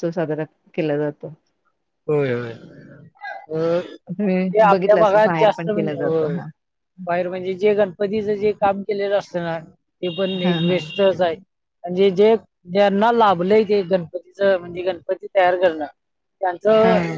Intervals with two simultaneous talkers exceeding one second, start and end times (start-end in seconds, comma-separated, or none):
4.1-6.3